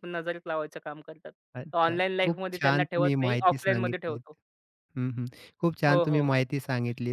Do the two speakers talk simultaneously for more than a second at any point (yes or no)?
yes